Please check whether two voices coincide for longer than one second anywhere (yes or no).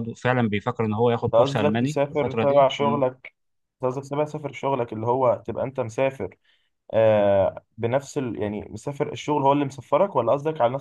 yes